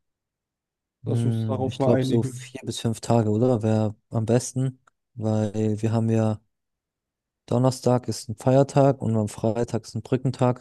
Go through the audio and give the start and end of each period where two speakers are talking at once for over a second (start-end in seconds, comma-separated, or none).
1.1-2.6